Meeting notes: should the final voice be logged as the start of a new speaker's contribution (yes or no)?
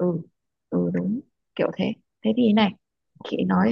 no